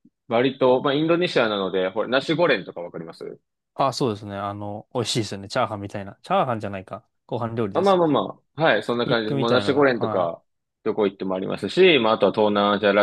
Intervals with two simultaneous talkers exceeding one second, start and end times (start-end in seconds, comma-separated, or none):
8.9-10.4